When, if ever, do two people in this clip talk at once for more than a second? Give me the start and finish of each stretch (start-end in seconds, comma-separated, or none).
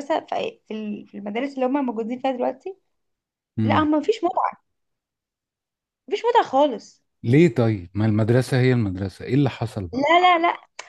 none